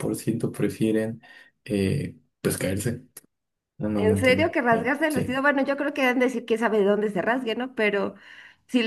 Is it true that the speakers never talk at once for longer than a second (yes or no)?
no